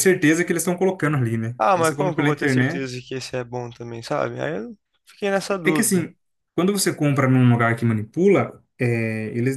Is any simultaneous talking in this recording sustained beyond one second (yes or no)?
yes